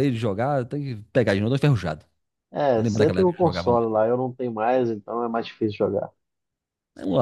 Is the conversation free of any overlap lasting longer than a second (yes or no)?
no